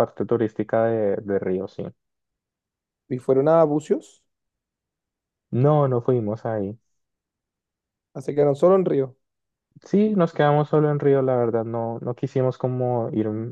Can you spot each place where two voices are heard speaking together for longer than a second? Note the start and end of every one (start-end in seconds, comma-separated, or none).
none